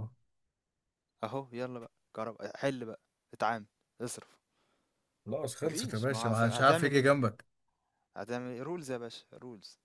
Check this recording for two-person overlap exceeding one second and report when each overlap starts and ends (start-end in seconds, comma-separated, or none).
5.6-7.1